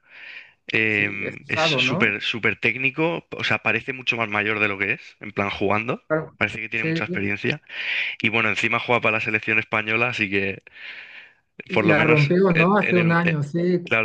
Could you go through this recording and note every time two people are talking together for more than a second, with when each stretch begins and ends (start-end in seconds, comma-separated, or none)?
0.9-2.1, 11.7-13.2